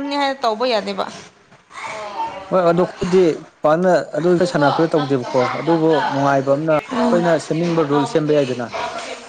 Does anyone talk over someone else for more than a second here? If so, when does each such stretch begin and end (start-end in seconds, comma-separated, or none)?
4.3-8.7